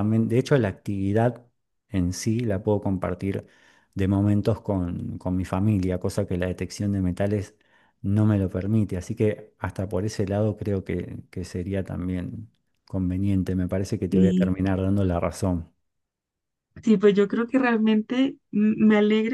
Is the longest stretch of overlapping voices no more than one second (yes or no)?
yes